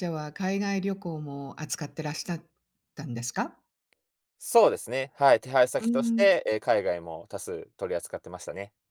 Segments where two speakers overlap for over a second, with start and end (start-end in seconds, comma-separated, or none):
none